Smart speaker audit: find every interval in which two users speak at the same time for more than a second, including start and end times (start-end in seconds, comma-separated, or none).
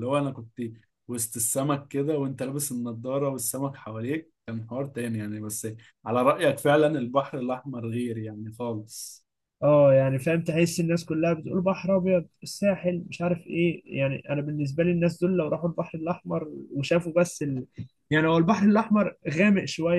none